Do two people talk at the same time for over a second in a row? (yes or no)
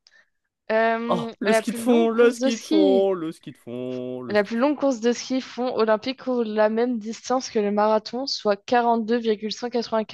yes